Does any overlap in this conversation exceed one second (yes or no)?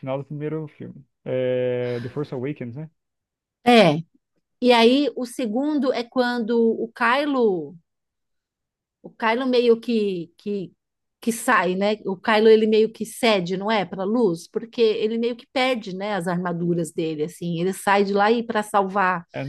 no